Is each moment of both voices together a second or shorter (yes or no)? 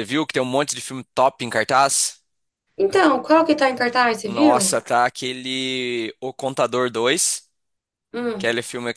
yes